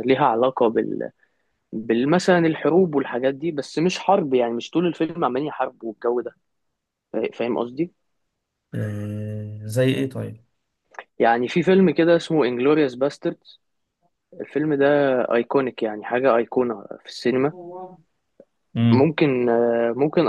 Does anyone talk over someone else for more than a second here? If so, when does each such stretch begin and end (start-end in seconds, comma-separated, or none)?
none